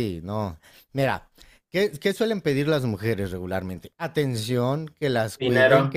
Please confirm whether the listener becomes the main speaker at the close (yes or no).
no